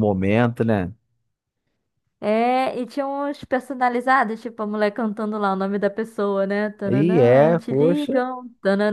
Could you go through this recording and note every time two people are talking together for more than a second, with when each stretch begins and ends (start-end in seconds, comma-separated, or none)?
6.9-8.1